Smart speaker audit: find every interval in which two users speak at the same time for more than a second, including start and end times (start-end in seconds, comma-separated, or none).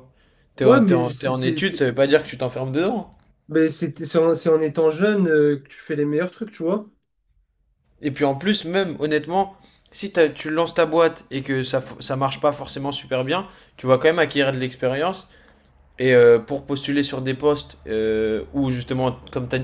0.6-1.9